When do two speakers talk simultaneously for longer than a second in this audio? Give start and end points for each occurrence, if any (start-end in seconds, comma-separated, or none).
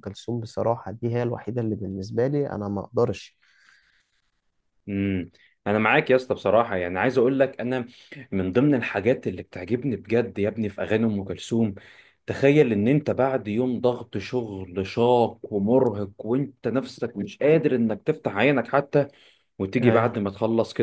none